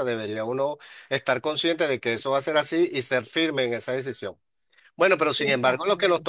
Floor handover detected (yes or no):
no